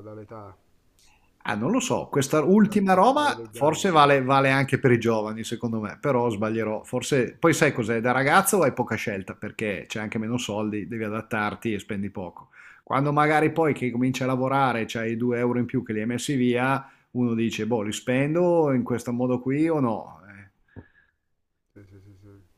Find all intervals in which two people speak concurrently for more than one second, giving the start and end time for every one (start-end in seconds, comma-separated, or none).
2.6-3.9